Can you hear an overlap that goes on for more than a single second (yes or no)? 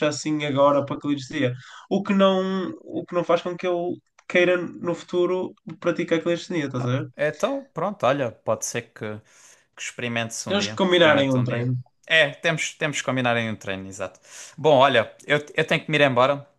yes